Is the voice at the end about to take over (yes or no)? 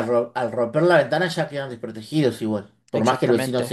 yes